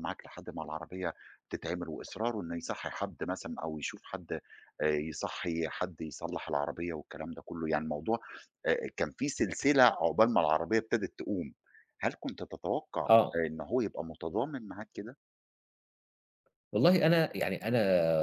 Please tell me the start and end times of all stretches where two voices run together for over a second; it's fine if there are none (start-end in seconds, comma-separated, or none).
none